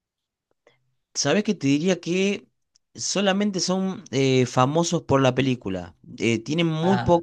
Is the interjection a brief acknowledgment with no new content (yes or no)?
yes